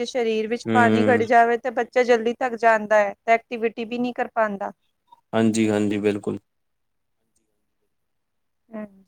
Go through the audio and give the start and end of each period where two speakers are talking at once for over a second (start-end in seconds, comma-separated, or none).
none